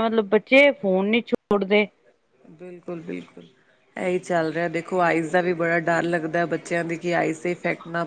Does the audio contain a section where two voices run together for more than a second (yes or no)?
no